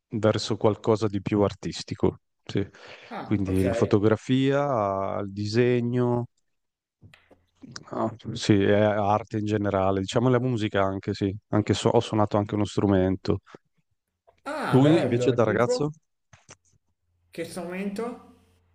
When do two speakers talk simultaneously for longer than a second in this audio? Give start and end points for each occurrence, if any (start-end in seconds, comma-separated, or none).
14.7-15.9